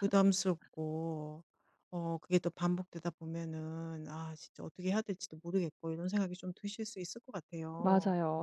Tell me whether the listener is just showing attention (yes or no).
no